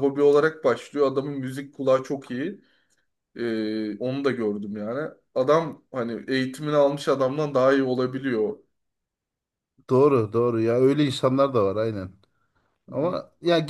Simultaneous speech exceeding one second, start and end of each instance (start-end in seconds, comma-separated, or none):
none